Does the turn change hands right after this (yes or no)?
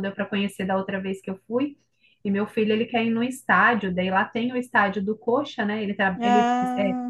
no